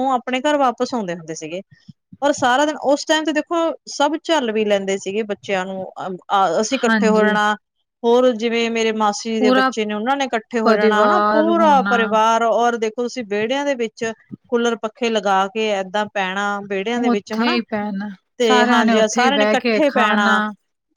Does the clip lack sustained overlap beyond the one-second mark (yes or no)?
no